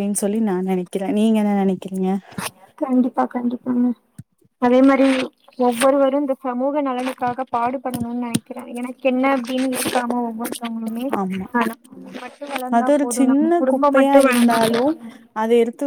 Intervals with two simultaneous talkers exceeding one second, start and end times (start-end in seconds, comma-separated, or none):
12.8-14.8